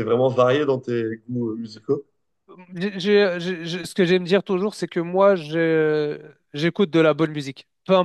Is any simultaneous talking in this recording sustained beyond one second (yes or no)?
no